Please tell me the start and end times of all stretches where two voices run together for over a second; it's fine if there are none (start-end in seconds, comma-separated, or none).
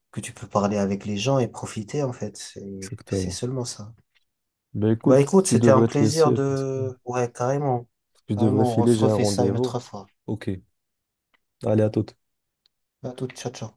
5.1-6.8, 8.3-9.8